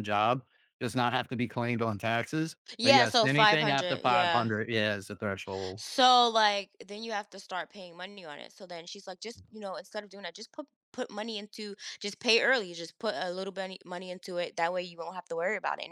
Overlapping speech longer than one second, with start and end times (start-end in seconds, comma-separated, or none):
2.8-4.5